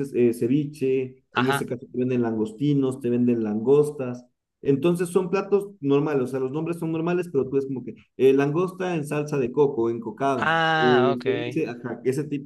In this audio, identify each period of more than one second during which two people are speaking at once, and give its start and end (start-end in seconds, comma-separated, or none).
10.4-11.6